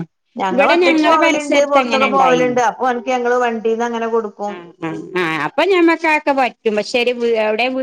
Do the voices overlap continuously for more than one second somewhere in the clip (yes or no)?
yes